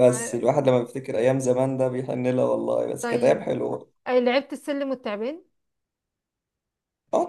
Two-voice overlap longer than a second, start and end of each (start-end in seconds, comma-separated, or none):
none